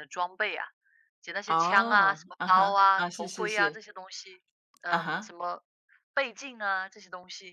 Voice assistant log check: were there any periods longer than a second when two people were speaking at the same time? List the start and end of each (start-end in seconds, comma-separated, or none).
1.5-3.8